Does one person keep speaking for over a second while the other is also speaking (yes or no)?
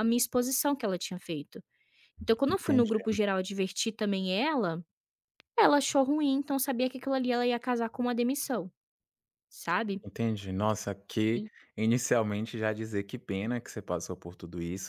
no